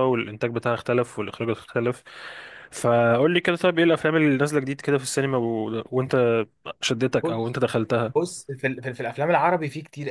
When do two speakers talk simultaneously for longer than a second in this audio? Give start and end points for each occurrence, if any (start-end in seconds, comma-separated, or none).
none